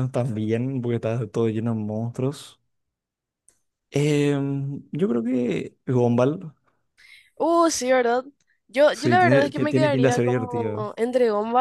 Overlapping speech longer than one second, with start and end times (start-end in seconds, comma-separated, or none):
8.9-10.9